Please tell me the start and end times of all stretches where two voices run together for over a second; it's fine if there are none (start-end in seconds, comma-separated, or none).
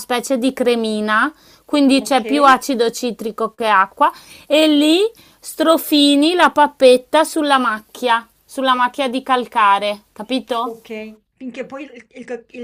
none